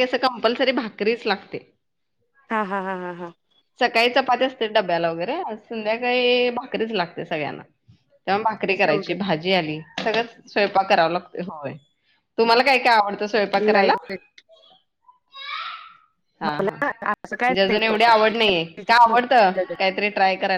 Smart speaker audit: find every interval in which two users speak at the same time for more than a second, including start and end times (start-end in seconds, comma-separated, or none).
none